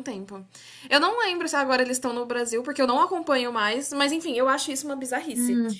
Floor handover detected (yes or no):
yes